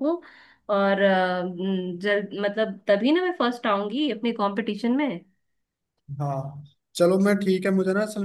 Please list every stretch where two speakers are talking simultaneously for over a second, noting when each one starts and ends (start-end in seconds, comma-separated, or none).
none